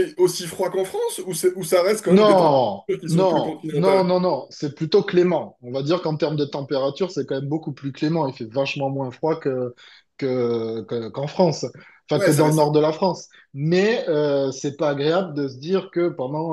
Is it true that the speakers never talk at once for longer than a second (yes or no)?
no